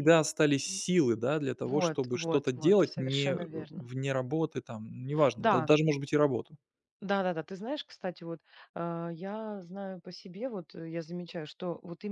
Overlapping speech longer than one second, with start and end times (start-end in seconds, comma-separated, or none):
1.6-3.9